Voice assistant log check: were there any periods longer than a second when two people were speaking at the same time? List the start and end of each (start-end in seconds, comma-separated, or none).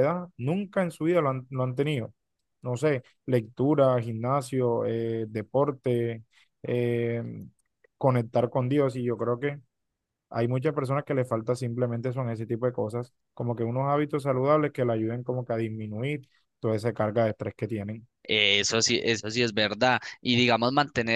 none